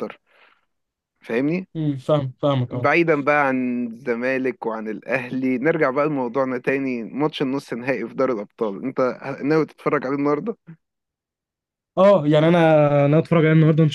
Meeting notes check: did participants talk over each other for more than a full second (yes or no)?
no